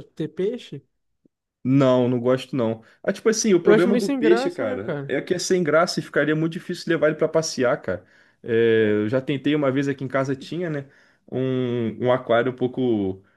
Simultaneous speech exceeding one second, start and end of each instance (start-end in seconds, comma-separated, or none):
3.6-5.1